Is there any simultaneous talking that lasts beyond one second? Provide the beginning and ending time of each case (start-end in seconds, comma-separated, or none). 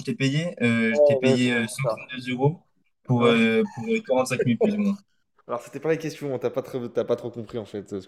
0.9-2.1